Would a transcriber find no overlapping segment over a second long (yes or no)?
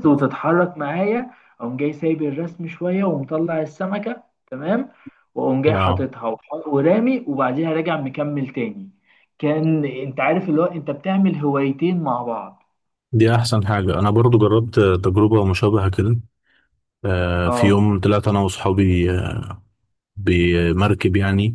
yes